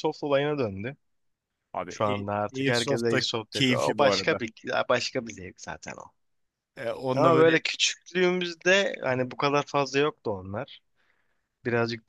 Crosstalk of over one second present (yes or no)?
yes